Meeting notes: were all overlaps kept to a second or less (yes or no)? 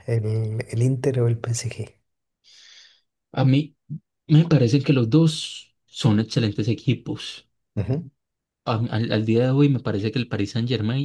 yes